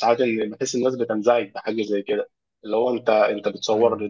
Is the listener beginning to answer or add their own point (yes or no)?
no